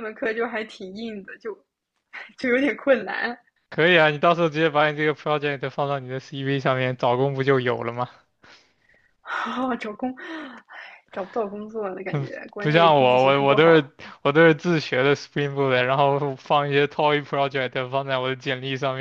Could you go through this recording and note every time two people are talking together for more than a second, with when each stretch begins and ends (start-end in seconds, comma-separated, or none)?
12.1-13.9